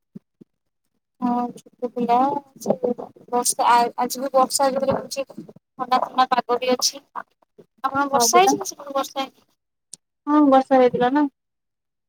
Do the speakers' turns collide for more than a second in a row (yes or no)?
no